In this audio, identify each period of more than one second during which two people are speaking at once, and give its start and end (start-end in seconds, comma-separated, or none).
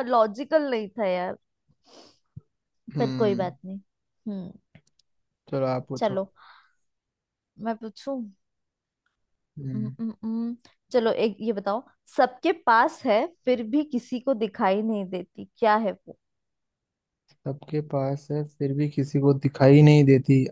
none